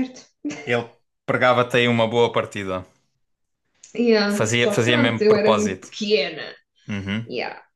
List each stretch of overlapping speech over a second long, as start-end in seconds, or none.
4.3-5.9